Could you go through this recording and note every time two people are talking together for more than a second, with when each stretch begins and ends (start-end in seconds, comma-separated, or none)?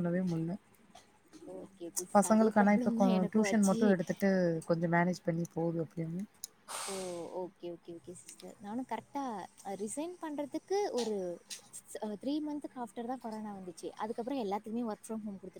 2.1-3.8